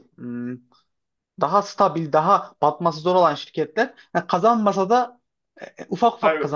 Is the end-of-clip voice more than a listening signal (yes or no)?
no